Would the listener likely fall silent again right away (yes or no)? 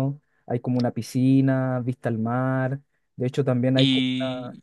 no